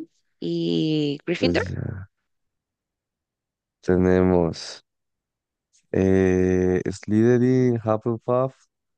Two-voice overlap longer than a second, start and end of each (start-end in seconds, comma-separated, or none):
none